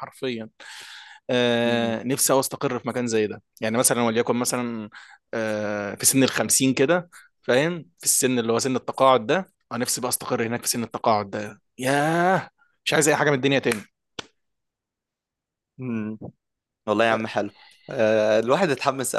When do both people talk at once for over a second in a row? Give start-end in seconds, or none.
none